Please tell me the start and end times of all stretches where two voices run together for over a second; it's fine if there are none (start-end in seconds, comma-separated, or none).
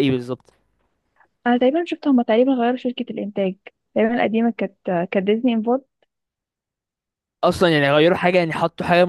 none